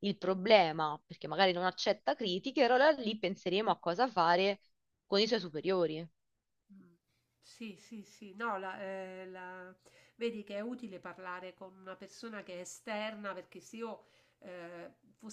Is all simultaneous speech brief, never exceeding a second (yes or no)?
yes